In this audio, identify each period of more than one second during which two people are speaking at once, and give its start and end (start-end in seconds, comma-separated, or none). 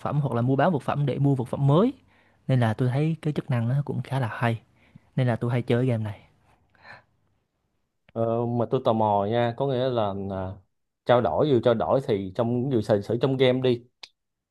none